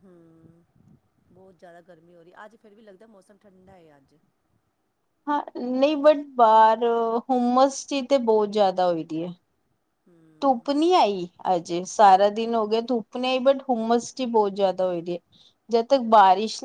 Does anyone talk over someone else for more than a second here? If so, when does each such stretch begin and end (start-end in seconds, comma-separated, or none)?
none